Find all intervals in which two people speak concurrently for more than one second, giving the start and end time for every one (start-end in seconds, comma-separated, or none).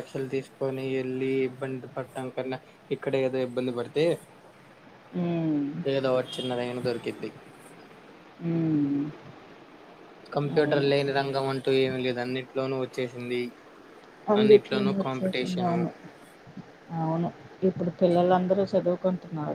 14.4-15.8